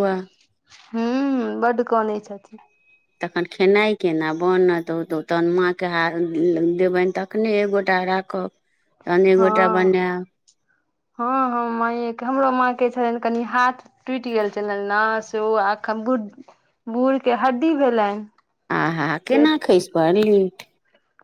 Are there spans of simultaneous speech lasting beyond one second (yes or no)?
no